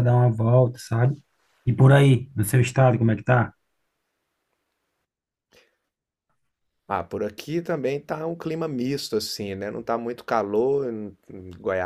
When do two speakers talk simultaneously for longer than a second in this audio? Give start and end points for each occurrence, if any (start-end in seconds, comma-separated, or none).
none